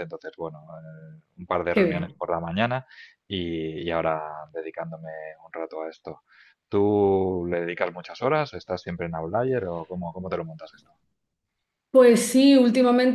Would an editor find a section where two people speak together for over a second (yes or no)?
no